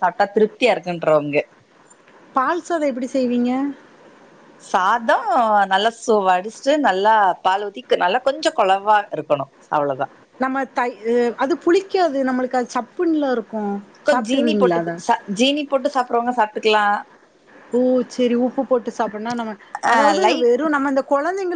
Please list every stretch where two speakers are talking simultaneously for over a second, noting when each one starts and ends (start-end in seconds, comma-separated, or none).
none